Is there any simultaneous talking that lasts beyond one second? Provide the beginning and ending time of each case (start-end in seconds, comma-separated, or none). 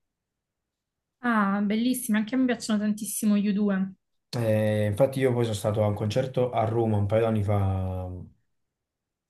none